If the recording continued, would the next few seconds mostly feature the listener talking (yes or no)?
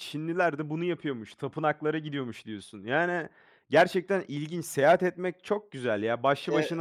no